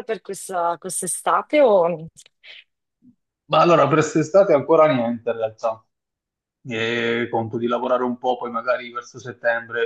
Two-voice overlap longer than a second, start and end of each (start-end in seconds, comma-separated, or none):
none